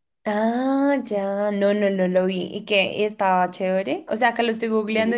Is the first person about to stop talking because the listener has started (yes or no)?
no